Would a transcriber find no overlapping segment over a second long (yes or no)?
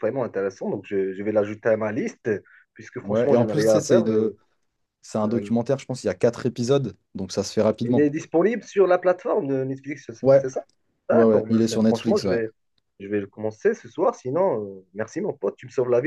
no